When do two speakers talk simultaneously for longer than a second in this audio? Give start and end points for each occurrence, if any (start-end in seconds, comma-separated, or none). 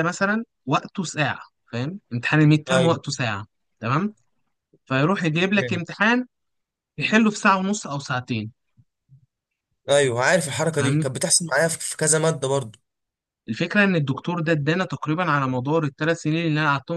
none